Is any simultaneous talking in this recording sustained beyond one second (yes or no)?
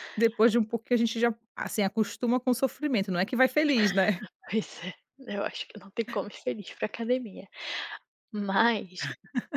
no